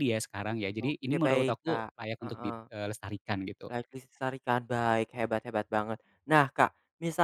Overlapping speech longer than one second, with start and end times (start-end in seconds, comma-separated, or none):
0.9-2.6